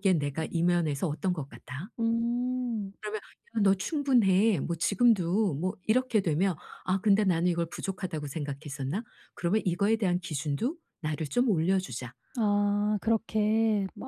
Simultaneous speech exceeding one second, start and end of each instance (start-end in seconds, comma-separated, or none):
none